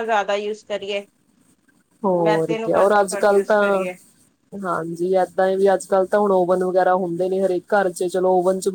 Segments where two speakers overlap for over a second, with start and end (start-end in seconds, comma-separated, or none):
2.2-3.9